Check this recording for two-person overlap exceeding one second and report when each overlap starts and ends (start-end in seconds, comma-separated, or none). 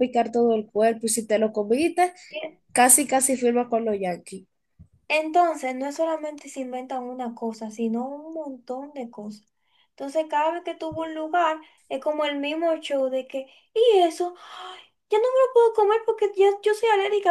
none